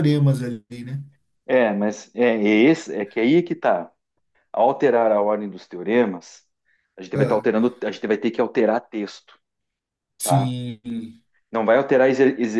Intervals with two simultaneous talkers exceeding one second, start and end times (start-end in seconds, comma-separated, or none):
none